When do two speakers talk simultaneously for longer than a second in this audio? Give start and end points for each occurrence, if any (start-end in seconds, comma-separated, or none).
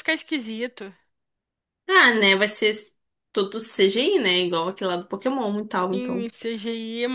none